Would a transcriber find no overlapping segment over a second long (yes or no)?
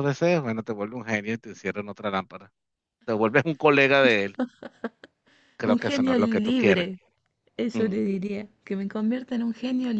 no